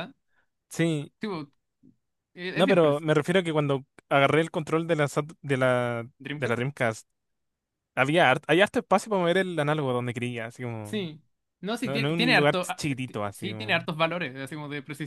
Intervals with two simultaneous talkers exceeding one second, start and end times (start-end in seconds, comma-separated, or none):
11.8-13.8